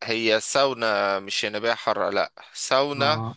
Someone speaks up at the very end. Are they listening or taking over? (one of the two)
listening